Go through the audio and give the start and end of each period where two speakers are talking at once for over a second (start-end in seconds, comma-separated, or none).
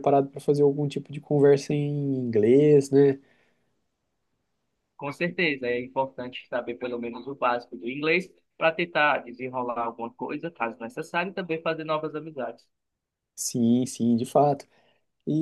none